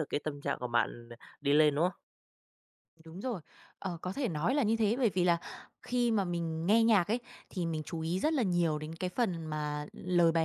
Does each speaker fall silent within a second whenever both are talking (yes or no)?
yes